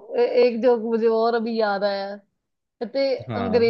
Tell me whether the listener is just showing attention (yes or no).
yes